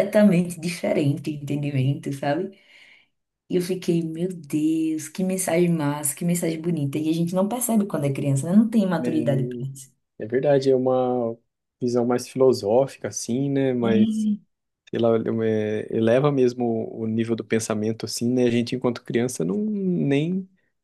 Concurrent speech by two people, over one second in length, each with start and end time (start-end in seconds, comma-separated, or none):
none